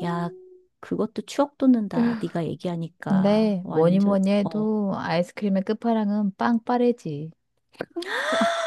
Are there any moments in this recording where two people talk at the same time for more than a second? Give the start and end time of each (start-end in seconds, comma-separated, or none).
3.1-4.7